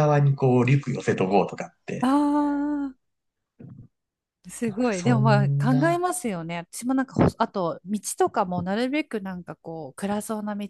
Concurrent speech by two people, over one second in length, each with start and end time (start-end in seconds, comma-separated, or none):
4.7-6.0